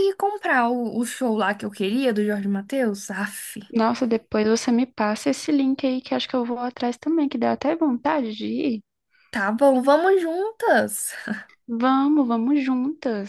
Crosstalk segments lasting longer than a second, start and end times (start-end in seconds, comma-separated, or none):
none